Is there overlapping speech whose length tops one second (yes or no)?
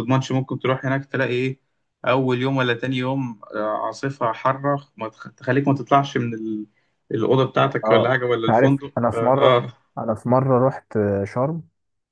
yes